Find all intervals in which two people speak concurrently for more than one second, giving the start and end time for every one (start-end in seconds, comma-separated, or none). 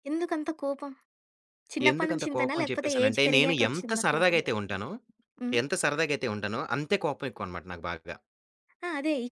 1.9-4.4